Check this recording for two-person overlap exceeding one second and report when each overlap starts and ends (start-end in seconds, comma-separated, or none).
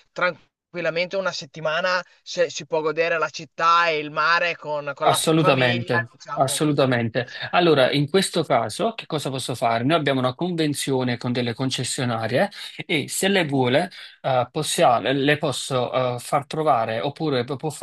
5.1-6.7